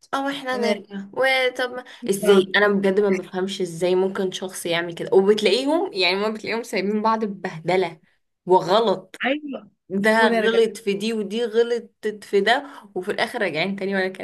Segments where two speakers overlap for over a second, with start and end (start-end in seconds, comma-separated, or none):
none